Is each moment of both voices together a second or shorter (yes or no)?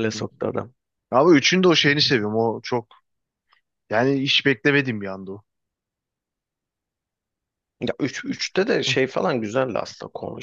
yes